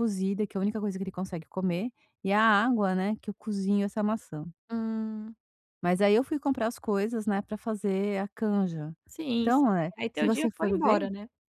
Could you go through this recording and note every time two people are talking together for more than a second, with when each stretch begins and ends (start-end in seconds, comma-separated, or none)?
9.4-11.0